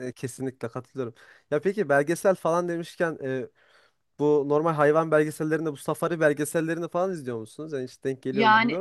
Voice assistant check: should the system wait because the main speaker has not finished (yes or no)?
no